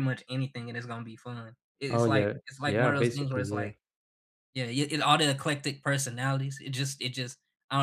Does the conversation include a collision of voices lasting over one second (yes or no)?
yes